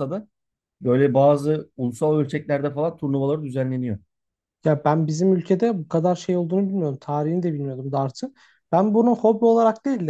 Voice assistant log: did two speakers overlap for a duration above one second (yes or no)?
no